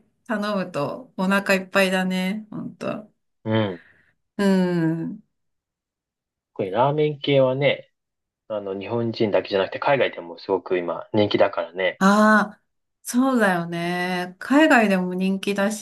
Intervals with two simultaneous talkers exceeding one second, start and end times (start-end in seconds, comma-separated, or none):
none